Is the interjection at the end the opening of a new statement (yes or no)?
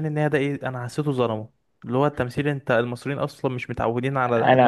yes